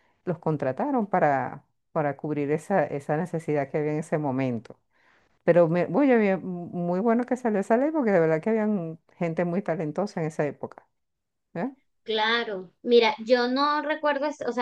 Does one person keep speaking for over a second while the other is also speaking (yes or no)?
no